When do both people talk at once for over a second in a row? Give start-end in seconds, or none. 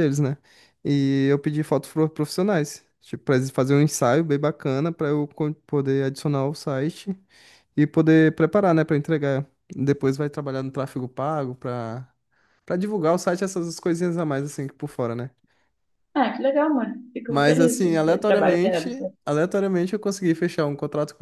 17.3-19.1